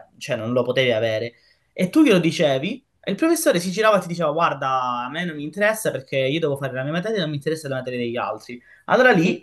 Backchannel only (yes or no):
yes